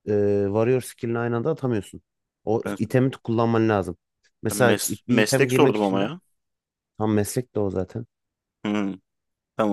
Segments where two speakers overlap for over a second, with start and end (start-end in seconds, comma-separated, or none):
4.5-6.1